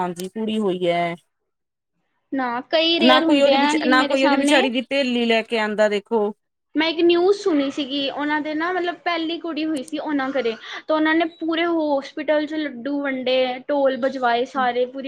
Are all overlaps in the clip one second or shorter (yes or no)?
no